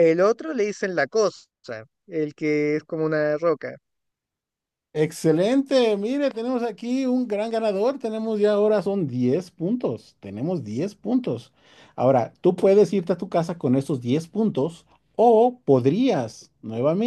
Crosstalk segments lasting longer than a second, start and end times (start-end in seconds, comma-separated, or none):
none